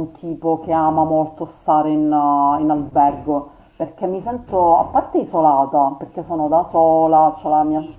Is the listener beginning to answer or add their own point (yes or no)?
no